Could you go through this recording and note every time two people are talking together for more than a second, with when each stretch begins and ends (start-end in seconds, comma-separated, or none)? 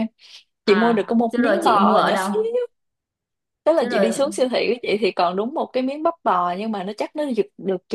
0.7-2.3